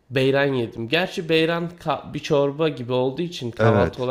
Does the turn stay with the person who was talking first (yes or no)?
no